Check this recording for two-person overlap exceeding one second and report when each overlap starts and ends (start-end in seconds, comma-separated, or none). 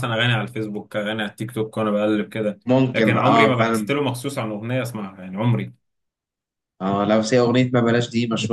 2.7-3.9